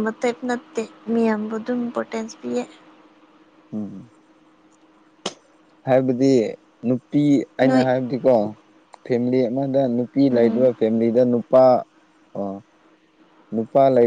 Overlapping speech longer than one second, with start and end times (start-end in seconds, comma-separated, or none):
none